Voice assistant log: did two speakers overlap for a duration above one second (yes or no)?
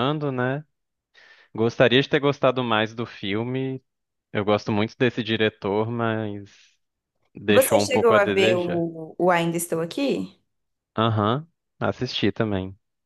yes